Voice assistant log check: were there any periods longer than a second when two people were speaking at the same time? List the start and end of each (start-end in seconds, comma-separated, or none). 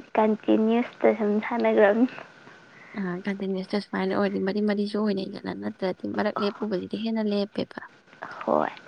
none